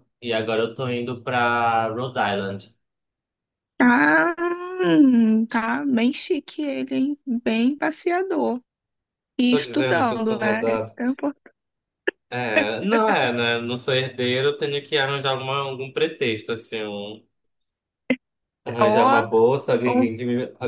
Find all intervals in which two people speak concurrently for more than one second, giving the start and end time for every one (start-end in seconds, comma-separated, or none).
9.5-10.9